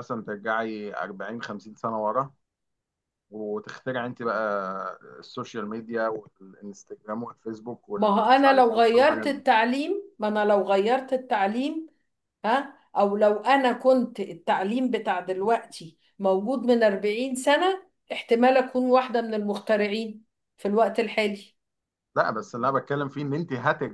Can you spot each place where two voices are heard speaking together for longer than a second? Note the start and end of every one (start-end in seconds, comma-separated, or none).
8.0-9.4